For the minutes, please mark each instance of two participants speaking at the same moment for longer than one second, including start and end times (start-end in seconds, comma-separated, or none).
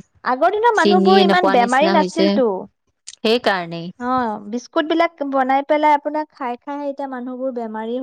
0.8-2.3